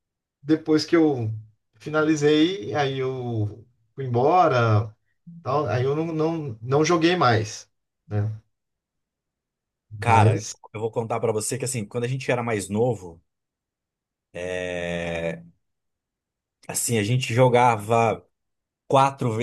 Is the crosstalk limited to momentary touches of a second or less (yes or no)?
yes